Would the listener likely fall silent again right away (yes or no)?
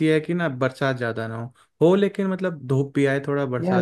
no